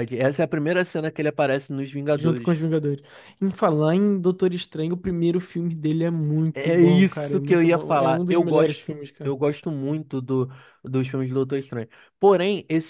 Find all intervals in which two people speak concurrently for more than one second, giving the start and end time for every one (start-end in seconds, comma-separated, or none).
6.5-9.3